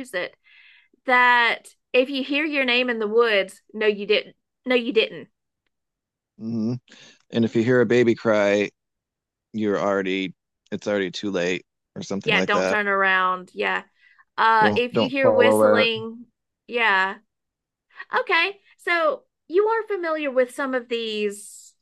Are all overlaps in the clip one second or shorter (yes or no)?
no